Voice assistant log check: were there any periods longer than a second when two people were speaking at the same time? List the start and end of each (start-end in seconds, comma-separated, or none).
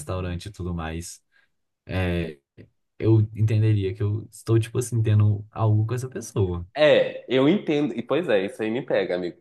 none